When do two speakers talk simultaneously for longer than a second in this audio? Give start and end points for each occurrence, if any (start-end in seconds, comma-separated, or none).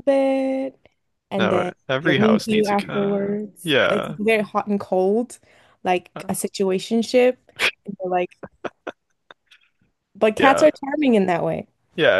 1.4-4.2